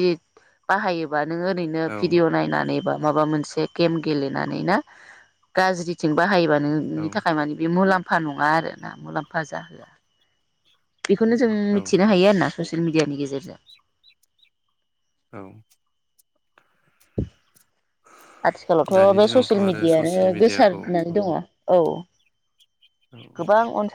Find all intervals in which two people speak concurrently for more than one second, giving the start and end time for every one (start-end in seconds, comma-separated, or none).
18.9-21.1